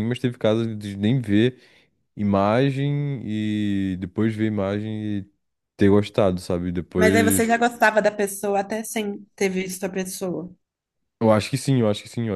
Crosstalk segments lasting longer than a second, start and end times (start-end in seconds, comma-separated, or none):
none